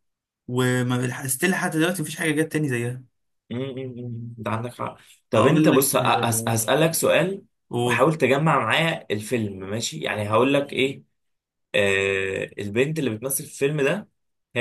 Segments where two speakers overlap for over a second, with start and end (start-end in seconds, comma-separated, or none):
5.3-6.5